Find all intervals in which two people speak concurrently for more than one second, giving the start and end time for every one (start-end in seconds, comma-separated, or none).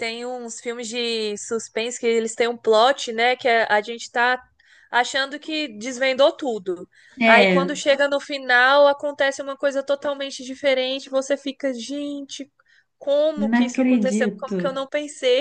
13.3-14.7